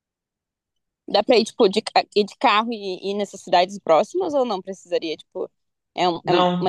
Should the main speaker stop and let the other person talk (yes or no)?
yes